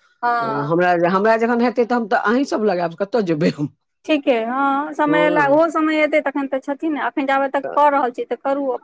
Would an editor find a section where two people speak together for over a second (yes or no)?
no